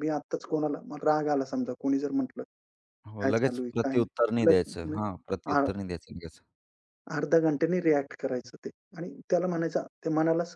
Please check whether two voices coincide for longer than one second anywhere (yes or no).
yes